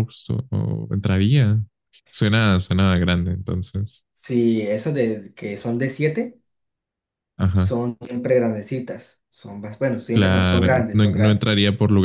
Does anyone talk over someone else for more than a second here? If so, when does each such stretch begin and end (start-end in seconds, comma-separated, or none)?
10.1-11.4